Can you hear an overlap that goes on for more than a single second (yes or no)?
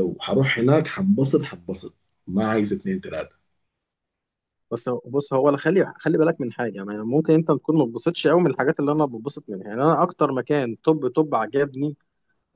no